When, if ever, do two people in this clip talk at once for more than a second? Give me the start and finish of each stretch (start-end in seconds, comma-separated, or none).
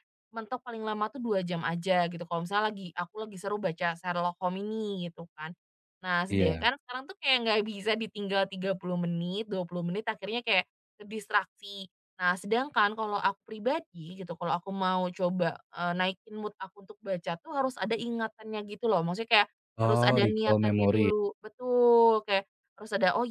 19.9-21.1